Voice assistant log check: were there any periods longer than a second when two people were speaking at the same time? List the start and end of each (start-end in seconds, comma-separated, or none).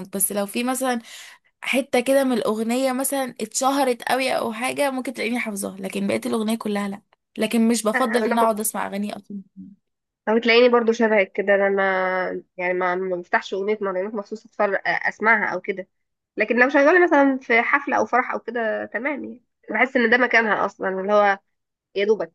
none